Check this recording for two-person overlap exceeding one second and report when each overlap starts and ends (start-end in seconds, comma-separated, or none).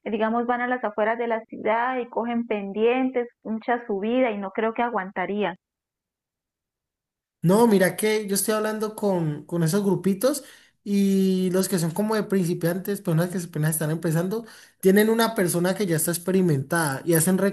none